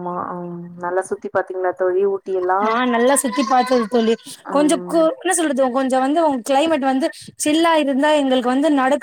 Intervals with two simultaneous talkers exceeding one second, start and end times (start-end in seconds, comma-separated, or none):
none